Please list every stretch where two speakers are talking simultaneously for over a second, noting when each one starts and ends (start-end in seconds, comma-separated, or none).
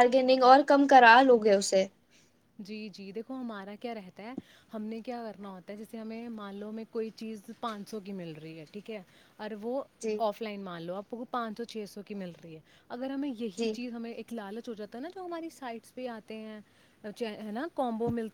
none